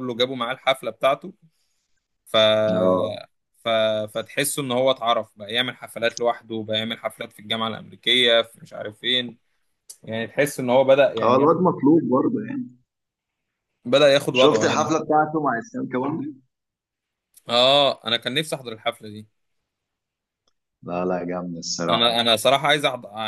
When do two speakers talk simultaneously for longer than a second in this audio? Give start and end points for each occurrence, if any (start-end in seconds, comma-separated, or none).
none